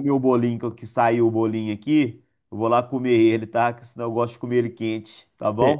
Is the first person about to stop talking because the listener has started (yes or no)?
yes